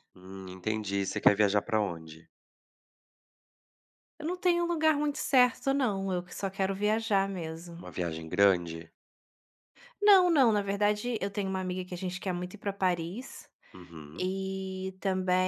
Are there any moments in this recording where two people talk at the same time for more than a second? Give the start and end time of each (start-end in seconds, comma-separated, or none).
none